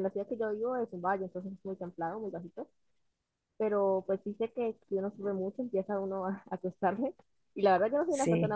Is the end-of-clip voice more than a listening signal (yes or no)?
no